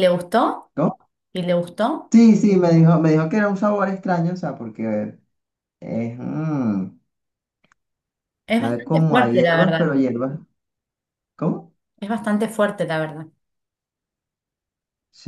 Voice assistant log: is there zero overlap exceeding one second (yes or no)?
no